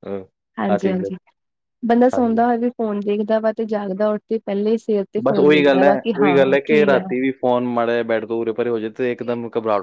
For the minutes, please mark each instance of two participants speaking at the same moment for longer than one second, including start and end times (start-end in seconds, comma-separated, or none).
5.2-7.0